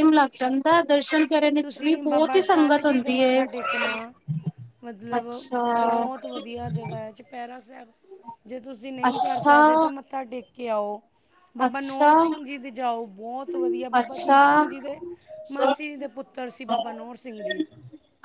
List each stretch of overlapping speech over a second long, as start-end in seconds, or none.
1.6-3.4